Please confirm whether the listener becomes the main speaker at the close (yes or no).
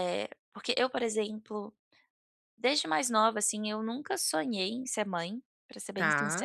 no